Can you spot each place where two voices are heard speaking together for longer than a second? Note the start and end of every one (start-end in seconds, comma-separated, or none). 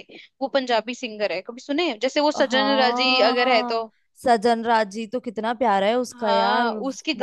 2.5-3.8